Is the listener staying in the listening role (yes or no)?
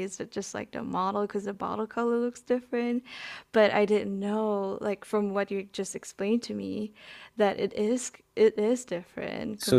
no